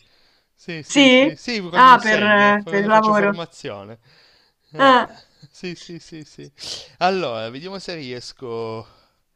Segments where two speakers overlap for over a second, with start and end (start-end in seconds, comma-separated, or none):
0.8-3.4